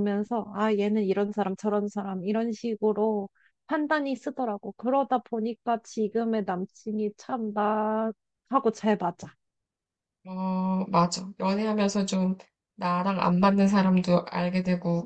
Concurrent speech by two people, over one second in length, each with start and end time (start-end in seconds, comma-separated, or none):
none